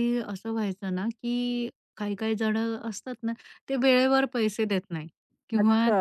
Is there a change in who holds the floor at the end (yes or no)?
no